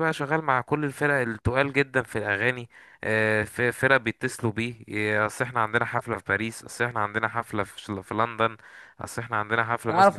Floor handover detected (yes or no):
yes